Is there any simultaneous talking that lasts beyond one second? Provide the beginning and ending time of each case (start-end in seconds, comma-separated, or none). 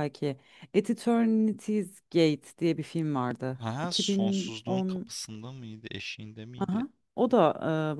3.6-5.1